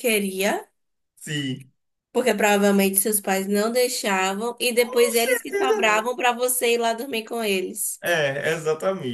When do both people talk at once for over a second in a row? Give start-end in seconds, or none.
4.8-6.1